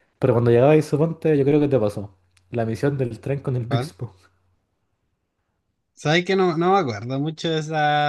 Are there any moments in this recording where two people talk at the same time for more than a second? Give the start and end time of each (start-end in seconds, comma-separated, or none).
none